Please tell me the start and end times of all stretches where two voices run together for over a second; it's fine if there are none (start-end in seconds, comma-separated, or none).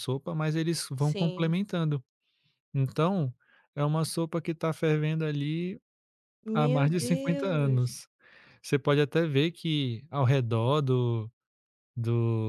6.5-8.0